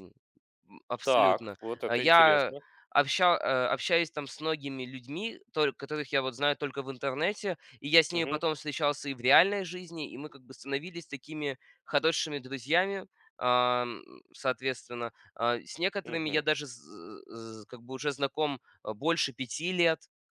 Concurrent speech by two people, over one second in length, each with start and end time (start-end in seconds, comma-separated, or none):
1.0-2.5